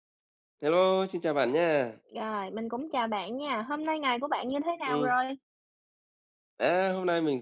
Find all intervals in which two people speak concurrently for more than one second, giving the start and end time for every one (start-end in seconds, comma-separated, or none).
none